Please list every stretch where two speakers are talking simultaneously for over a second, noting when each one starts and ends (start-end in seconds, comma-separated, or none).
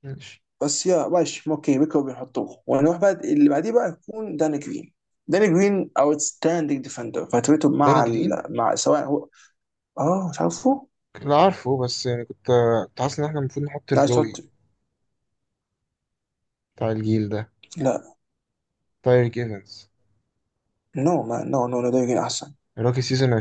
none